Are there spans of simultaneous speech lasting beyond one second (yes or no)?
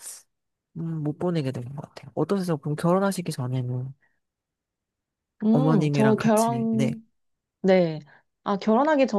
yes